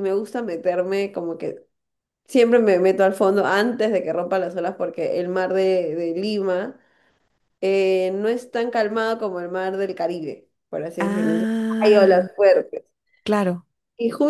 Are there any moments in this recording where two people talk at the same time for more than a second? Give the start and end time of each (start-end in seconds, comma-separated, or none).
11.0-12.3